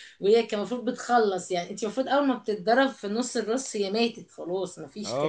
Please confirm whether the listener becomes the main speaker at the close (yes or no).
yes